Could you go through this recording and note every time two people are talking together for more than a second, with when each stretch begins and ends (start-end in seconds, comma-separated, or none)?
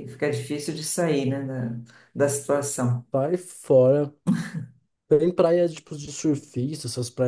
none